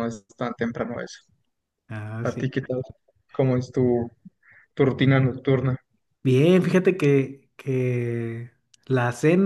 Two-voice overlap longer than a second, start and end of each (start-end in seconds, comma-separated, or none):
none